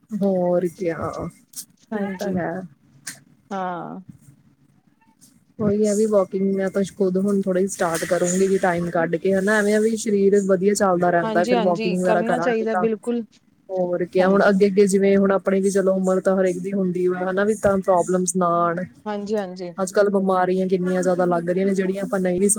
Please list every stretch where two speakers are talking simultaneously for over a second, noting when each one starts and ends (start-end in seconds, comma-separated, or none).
11.2-12.9